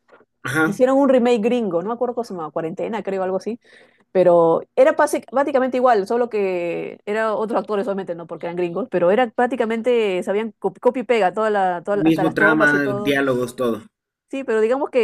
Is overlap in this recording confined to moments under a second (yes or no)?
no